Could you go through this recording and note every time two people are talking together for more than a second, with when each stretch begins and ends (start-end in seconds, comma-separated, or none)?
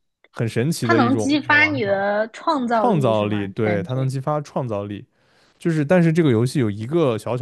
0.8-2.0, 2.7-4.1